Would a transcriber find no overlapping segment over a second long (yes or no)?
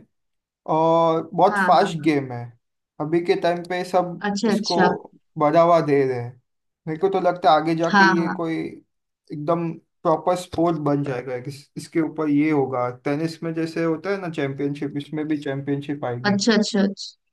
yes